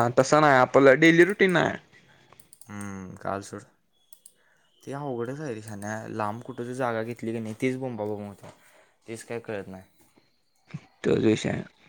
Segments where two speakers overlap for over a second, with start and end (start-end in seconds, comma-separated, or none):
none